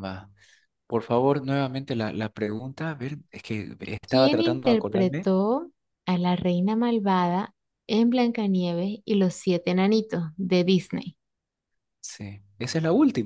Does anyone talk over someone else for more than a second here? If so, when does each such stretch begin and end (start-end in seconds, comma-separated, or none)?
4.1-5.3